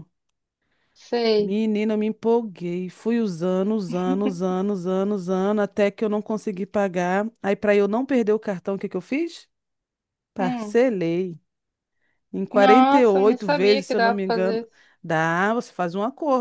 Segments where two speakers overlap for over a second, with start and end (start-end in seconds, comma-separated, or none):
12.5-14.7